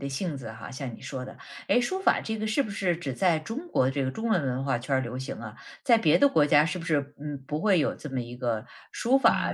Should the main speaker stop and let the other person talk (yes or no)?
yes